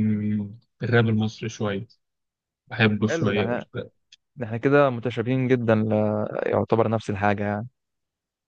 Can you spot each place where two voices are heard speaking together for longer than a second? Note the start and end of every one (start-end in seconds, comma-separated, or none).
none